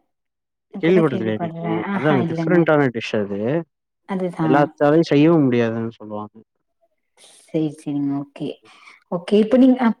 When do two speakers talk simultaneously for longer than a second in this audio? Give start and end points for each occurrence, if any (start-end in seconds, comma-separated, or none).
0.8-2.6